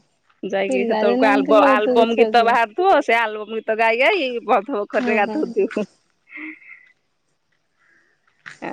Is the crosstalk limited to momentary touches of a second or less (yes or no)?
no